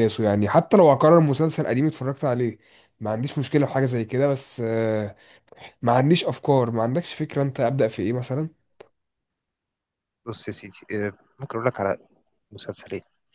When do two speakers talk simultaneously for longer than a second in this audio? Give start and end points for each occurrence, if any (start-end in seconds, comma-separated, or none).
none